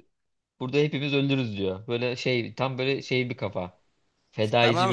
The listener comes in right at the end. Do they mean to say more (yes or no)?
yes